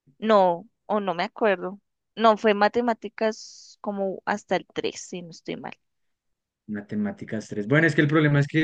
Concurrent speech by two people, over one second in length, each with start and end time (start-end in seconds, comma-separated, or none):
none